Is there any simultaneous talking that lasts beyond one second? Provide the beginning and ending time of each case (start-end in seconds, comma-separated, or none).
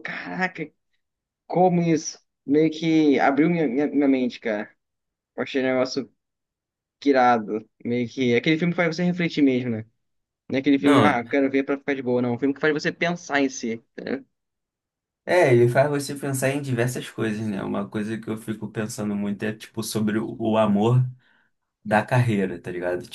none